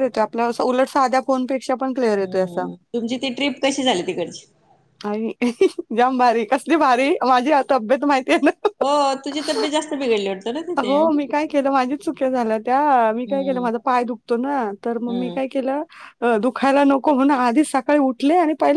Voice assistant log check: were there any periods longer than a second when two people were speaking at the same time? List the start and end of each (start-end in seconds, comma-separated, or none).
none